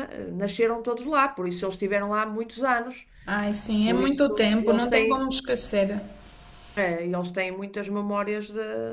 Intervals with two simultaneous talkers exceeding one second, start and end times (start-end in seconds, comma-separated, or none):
3.8-5.3